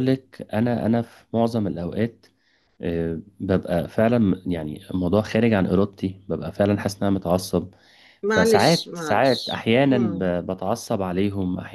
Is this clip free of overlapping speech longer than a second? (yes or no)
no